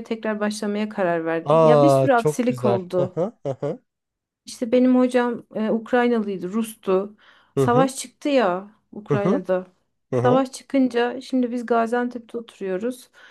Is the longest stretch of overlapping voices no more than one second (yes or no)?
no